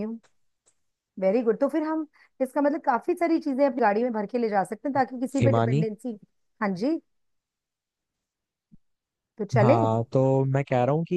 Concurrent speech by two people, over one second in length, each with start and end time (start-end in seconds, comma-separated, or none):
none